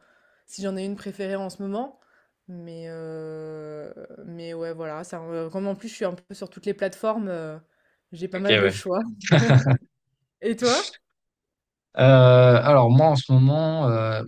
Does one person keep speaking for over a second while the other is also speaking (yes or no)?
no